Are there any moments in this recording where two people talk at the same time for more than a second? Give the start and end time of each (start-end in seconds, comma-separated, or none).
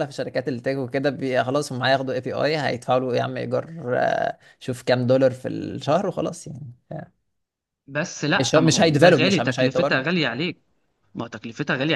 8.3-10.1